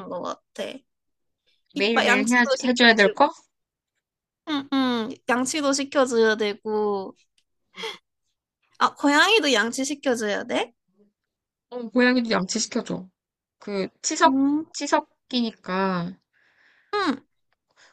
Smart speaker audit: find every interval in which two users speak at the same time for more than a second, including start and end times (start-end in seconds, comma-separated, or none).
1.7-3.2